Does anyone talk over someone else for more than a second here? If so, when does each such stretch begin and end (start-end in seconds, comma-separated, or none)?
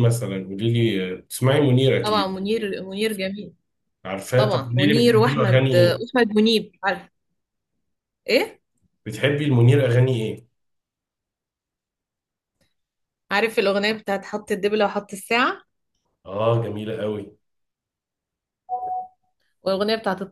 4.3-6.0